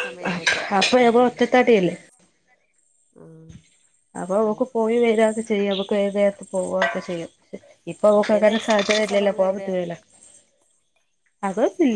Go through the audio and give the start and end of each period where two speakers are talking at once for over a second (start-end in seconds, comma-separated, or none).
8.1-9.7